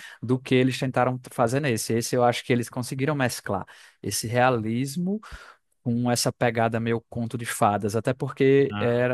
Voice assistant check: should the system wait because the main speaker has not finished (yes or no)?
yes